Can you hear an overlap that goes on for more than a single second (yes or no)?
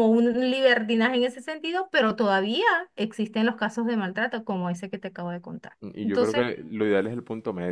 no